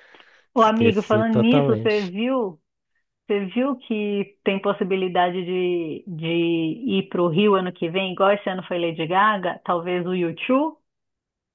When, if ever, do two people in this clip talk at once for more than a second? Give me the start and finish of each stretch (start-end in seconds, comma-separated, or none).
0.6-2.1